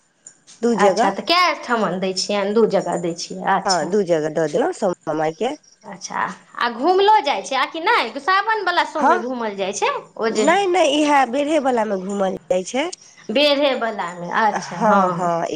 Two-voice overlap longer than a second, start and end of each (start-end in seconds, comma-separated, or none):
none